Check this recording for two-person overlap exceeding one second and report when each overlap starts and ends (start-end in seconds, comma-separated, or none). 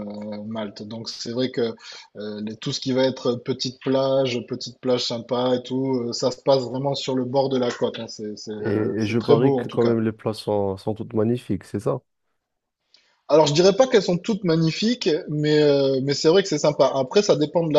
8.6-10.0